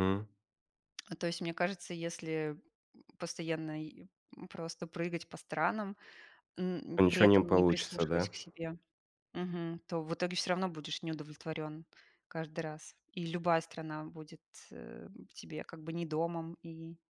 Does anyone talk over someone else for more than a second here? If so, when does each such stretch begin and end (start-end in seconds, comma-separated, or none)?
7.0-8.3